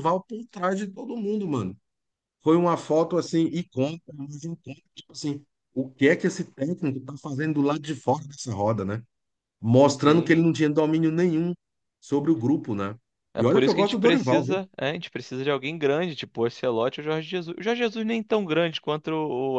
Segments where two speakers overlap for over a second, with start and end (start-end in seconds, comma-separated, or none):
13.4-14.6